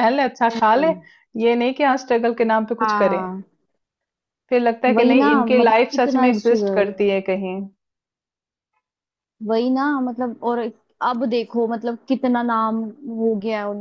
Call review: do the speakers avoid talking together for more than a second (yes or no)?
no